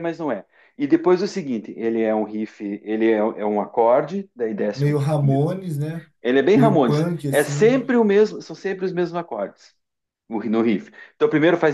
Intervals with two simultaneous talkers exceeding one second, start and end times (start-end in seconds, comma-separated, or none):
6.5-7.8